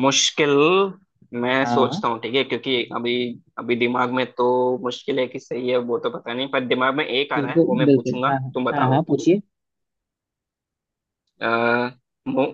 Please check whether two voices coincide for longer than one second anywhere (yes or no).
yes